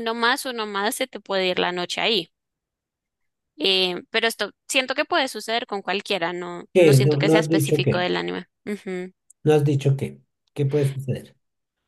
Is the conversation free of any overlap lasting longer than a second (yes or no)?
no